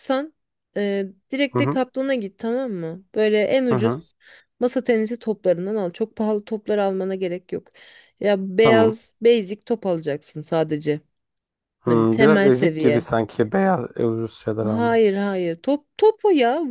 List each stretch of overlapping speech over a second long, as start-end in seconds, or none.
11.9-13.1